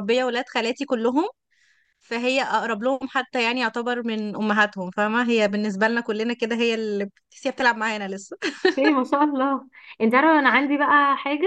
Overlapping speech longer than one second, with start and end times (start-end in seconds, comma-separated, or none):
none